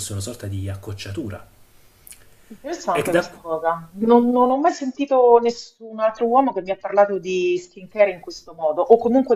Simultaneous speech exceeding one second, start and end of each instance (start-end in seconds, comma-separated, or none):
none